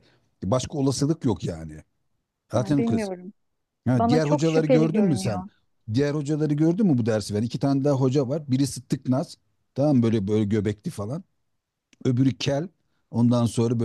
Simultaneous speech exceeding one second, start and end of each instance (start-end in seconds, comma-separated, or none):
4.0-5.4